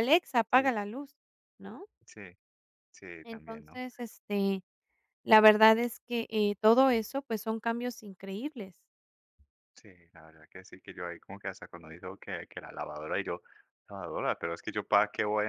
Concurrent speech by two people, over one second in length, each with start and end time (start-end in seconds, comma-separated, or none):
none